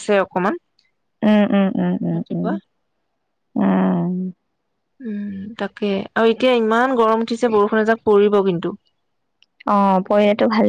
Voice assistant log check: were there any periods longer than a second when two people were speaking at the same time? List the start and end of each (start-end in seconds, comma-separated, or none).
none